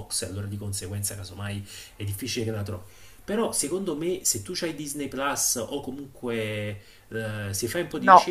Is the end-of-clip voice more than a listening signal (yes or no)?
no